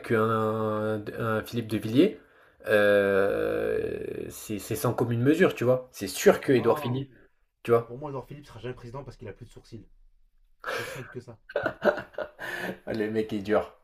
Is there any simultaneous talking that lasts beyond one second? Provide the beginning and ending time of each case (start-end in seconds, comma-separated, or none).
none